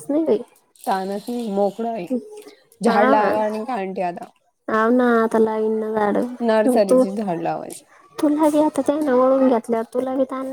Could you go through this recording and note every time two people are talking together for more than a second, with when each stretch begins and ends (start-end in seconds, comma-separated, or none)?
none